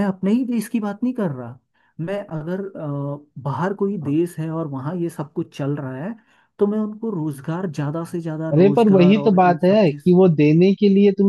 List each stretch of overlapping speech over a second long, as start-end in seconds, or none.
8.5-10.0